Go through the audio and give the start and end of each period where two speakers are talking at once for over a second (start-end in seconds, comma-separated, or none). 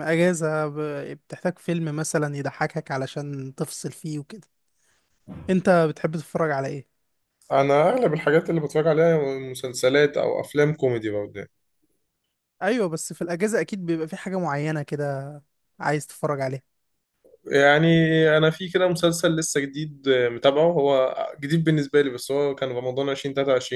none